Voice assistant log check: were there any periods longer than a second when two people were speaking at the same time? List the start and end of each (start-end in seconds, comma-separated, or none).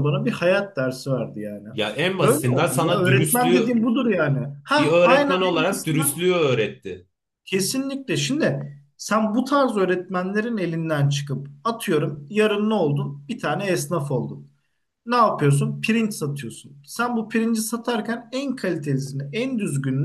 2.2-3.8, 4.8-6.1